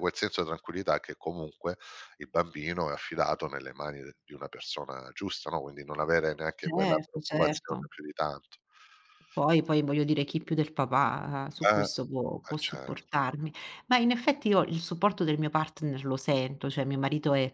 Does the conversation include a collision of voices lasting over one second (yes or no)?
yes